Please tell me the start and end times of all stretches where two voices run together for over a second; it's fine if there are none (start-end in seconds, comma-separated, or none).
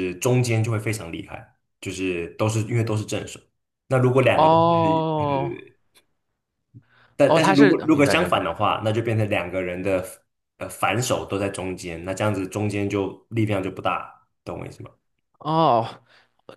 4.3-5.6, 7.2-8.4